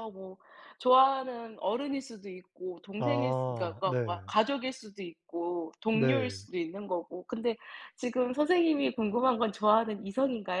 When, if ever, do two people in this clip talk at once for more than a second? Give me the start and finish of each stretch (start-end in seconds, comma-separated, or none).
3.0-4.3